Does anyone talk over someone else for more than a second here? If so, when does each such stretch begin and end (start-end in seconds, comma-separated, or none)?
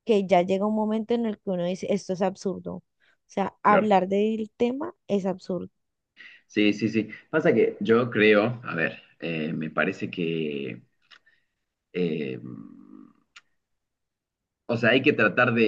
none